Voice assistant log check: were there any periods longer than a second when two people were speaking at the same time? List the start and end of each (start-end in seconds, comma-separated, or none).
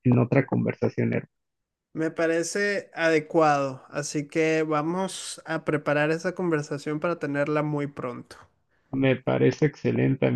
none